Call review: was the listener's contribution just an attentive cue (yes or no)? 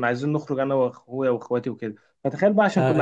yes